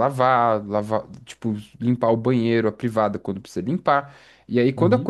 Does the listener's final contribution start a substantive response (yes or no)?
no